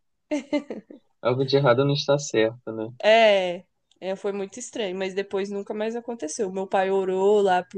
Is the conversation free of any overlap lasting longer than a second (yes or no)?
yes